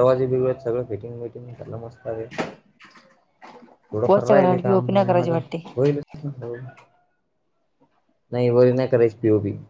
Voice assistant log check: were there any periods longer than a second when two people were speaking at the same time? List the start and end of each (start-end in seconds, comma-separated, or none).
4.1-5.4